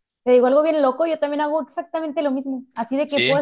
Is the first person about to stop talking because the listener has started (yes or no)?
no